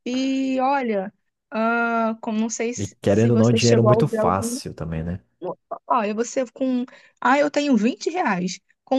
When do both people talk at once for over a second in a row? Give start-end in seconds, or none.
2.8-4.6